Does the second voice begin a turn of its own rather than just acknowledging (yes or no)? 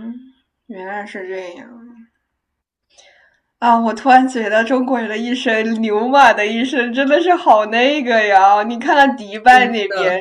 no